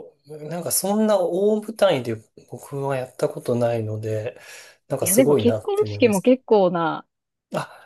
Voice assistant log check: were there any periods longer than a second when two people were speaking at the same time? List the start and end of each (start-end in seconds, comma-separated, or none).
5.0-6.3